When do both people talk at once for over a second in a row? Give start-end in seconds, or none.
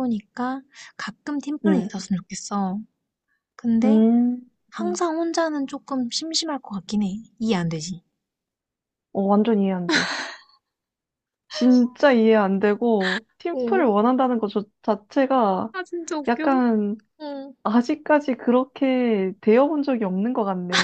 none